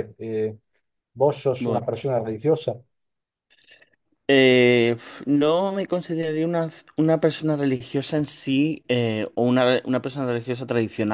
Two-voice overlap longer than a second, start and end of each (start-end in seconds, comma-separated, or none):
none